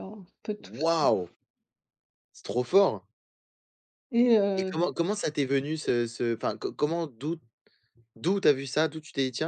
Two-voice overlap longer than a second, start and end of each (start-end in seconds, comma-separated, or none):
none